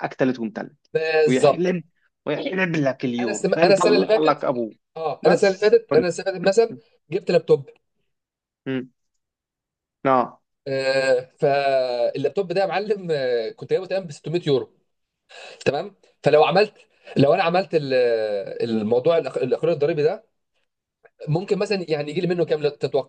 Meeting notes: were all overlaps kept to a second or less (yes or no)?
no